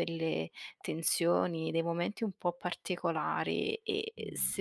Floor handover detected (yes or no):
no